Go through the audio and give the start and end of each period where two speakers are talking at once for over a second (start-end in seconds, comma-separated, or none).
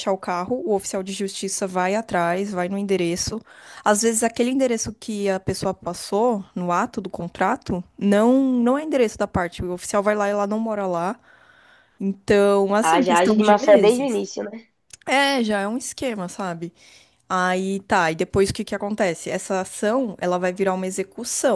12.8-14.2